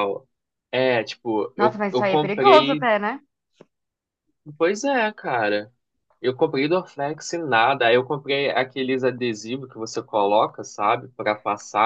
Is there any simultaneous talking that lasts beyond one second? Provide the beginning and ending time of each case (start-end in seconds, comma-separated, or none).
1.6-2.9